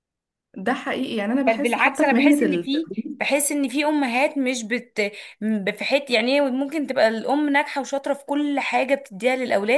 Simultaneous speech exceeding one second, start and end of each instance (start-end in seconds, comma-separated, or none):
1.5-3.3